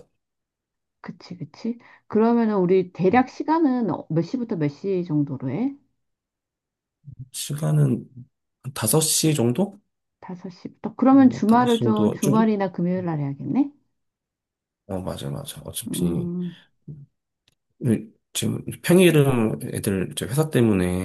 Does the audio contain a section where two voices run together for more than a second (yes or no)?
yes